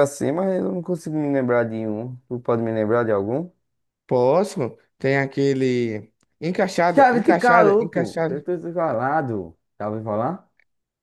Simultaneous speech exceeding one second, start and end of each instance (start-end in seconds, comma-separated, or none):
6.9-8.4